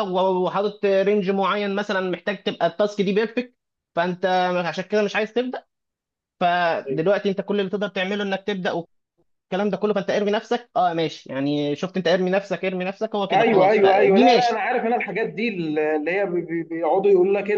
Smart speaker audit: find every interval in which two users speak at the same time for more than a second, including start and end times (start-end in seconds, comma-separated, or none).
13.3-14.6